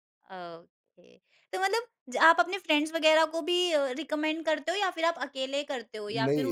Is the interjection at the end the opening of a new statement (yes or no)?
yes